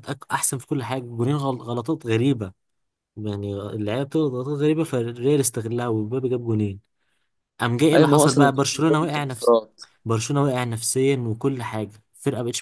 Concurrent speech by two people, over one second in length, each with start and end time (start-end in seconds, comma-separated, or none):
7.9-9.5